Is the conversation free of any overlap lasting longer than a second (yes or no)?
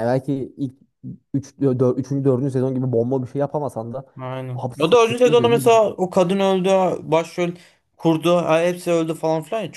no